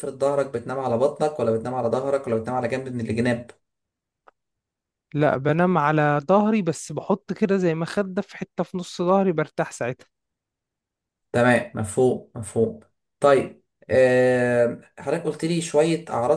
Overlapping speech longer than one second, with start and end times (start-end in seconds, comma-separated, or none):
none